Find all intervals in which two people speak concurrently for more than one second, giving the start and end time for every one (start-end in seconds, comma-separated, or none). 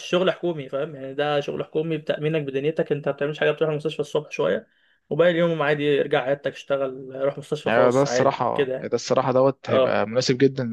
7.7-8.9